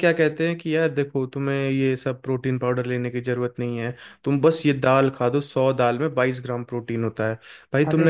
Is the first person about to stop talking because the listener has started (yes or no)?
no